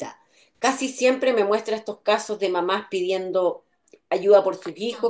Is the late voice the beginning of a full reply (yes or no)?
no